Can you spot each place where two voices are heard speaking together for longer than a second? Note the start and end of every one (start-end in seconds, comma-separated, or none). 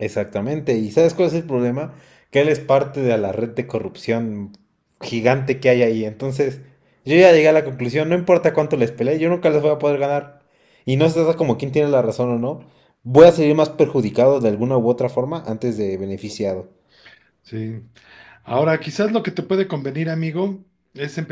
none